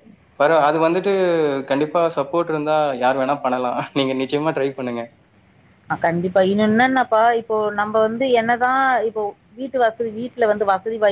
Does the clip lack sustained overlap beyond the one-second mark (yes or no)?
yes